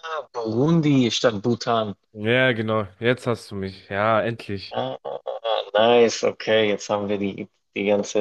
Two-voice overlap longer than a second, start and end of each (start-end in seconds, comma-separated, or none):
none